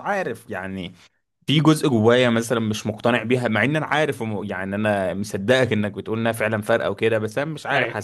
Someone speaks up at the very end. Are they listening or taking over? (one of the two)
listening